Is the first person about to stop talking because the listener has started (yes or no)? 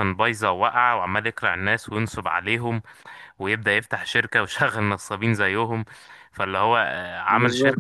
no